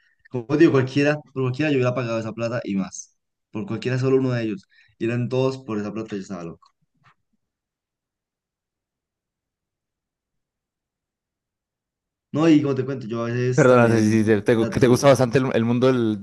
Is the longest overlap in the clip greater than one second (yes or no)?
yes